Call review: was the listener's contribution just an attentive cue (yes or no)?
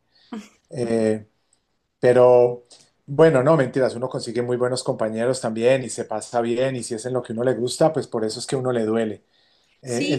no